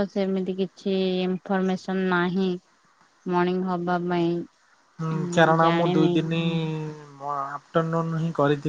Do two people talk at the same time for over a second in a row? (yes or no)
no